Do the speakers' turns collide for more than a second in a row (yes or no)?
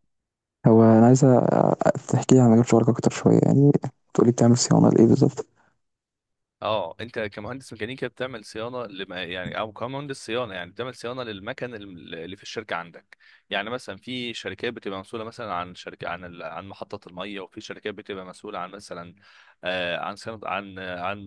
no